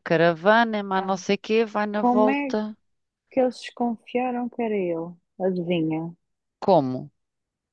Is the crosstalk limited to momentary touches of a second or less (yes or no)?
yes